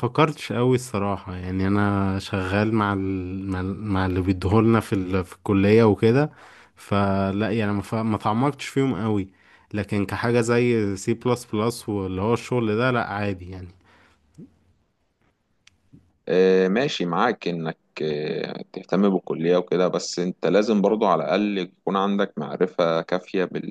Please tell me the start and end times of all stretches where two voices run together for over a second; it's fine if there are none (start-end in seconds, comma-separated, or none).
none